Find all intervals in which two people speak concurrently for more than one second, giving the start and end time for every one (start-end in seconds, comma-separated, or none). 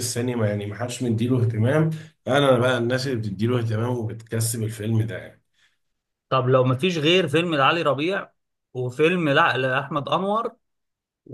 none